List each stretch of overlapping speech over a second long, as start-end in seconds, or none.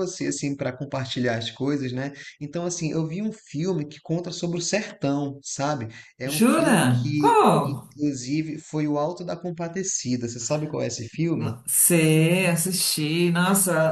6.2-7.9